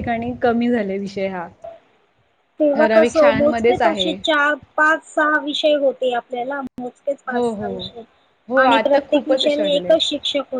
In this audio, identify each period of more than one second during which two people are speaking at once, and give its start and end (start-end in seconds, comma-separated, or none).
2.8-4.1, 8.6-10.0